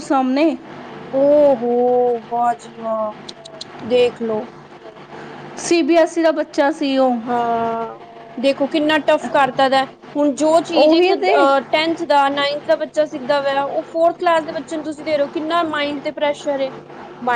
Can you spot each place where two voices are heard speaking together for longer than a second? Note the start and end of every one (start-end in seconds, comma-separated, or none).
none